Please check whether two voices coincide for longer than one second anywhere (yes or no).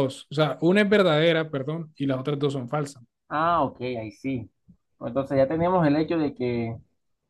no